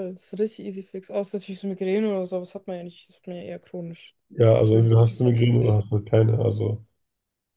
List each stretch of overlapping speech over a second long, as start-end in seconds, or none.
4.3-5.8